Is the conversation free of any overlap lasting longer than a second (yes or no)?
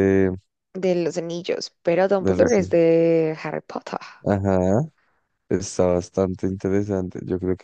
yes